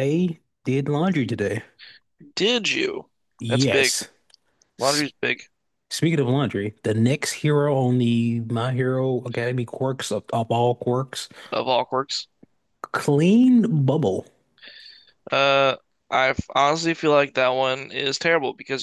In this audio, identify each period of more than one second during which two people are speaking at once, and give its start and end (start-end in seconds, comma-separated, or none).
none